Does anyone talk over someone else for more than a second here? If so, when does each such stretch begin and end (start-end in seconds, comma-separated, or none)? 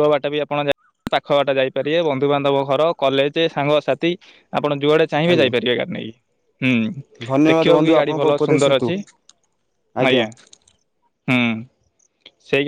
7.3-8.9